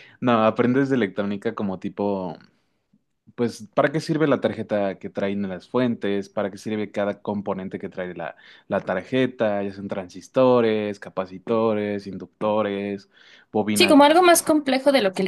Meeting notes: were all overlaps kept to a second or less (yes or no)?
yes